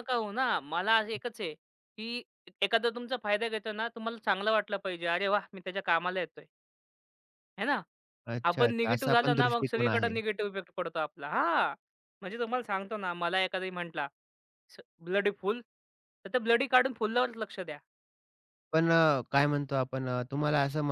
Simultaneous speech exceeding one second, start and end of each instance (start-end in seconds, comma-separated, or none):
8.5-10.2